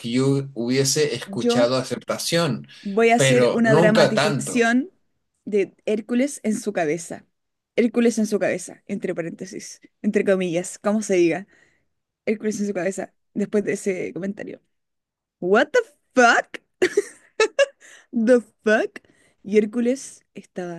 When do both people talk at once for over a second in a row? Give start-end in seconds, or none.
3.1-4.7